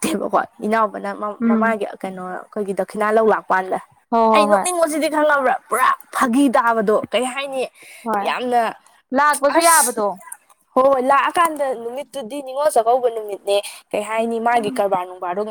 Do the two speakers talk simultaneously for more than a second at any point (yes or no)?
no